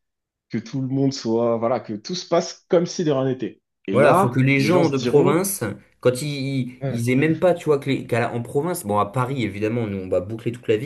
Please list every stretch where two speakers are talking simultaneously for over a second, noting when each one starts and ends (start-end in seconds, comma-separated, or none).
3.9-5.4